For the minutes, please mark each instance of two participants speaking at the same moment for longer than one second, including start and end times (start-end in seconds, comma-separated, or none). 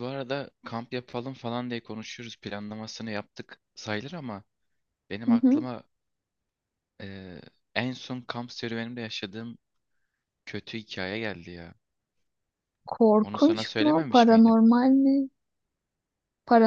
13.2-14.6